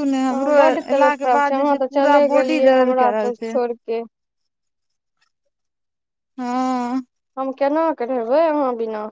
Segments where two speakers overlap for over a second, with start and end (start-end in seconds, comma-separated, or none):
0.9-3.5